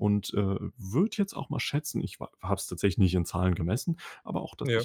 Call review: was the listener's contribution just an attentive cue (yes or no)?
yes